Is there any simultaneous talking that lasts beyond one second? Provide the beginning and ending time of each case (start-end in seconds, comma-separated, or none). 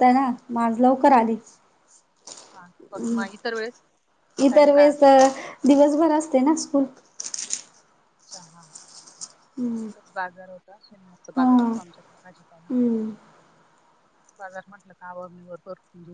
none